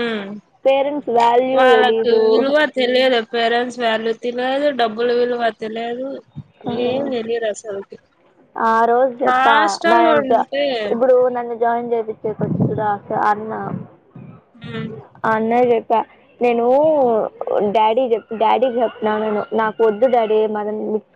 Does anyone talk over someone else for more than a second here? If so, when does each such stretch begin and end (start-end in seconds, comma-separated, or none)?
none